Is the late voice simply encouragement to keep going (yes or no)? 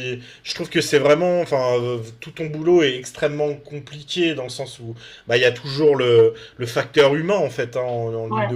yes